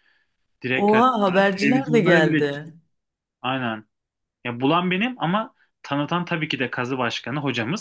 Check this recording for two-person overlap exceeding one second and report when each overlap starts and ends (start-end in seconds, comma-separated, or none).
0.8-2.7